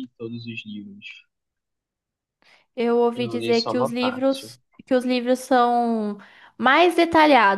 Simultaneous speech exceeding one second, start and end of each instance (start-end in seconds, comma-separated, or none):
3.2-4.5